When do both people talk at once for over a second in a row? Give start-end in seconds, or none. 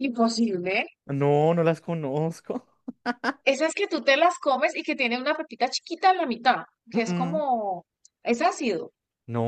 none